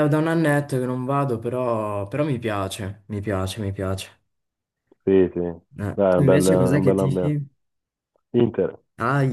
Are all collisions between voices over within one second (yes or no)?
no